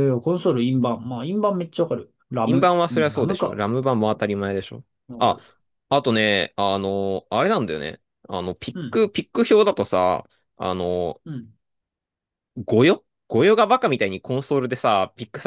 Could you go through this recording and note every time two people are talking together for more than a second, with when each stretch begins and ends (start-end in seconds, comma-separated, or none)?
2.5-3.6